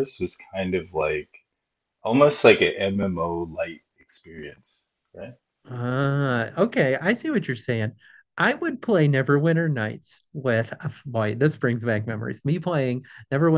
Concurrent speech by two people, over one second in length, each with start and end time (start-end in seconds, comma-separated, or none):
none